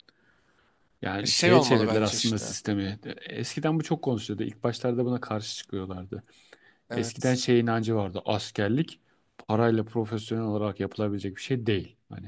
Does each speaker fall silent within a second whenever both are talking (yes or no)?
no